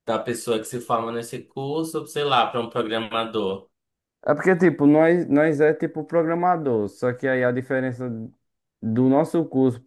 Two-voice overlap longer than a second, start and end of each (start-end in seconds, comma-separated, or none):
none